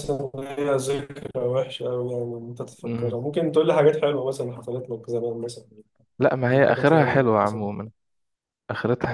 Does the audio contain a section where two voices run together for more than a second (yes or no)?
yes